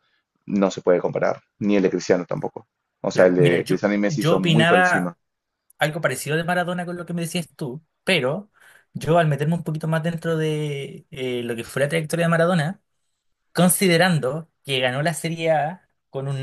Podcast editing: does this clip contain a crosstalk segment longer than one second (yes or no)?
yes